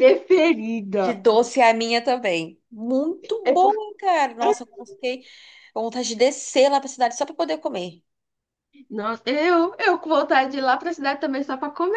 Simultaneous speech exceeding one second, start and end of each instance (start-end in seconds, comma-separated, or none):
none